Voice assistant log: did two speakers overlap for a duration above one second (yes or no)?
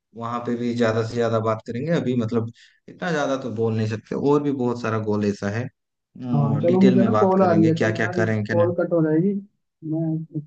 yes